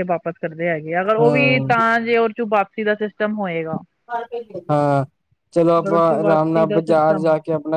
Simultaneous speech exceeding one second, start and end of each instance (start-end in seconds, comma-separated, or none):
5.8-7.2